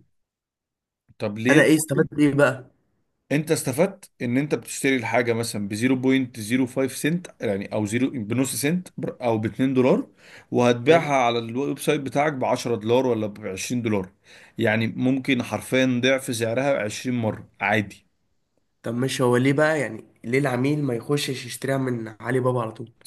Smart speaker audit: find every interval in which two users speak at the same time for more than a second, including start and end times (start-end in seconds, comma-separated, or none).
none